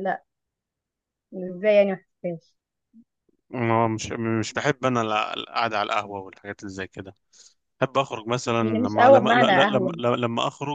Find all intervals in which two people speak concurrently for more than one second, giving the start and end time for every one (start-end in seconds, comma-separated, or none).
8.6-10.0